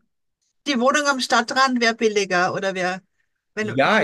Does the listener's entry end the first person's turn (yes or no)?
yes